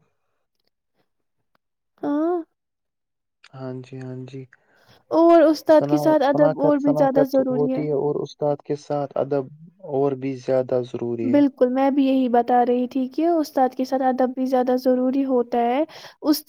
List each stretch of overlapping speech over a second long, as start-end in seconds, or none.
5.8-7.7